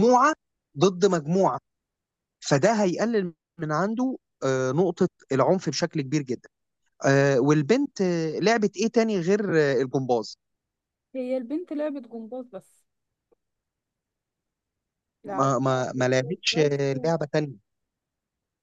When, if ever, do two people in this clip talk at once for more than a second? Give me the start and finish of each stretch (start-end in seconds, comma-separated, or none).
15.2-17.0